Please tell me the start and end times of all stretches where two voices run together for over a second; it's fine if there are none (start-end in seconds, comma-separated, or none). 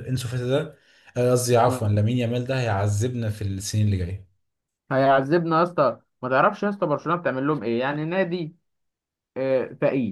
none